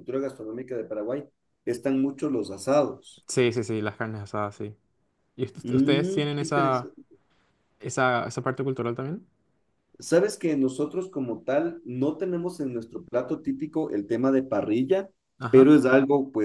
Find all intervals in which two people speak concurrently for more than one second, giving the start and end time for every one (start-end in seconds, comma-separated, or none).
5.6-6.9